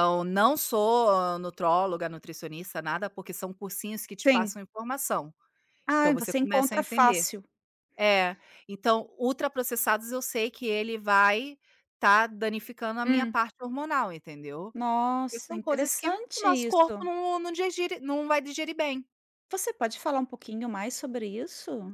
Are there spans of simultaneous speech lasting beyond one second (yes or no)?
yes